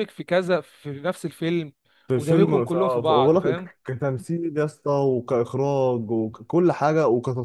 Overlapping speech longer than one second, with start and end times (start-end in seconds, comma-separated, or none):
2.1-3.7